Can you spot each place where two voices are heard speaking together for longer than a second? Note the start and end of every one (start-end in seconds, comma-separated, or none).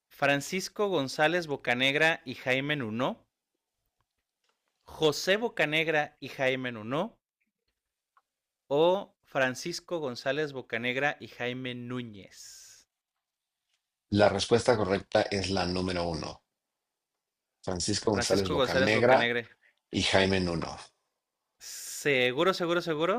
18.1-19.3